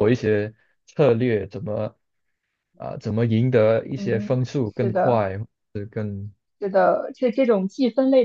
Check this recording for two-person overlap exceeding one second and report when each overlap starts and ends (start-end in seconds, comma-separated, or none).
4.0-5.2